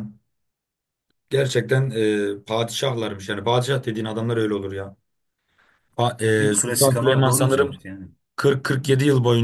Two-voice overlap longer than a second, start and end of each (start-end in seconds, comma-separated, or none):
6.4-7.7